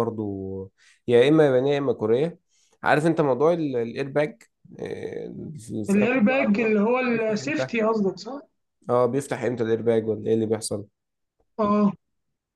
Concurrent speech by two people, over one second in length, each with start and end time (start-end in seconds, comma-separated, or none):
5.9-7.7